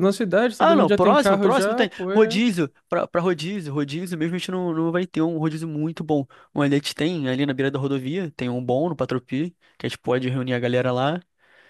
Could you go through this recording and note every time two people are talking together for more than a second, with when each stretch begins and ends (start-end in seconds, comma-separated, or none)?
0.6-2.4